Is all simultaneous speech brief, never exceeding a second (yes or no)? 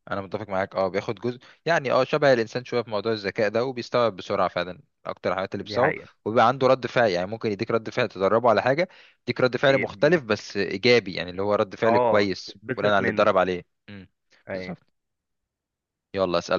no